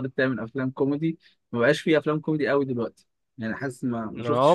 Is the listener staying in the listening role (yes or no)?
no